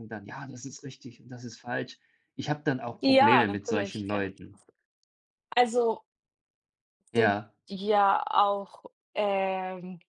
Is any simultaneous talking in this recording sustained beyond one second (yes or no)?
yes